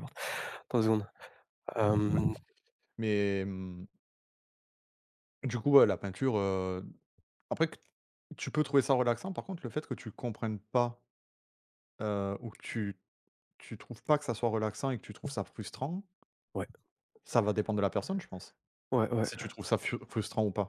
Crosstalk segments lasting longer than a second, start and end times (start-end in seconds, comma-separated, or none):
none